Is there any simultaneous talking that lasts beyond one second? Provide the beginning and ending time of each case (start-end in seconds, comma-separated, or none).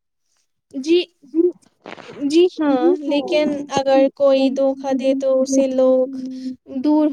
4.4-6.1